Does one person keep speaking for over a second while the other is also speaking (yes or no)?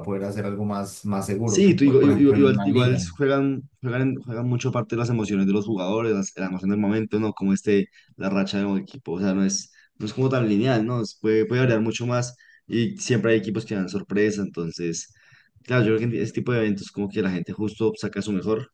yes